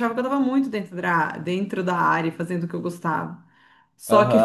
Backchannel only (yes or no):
no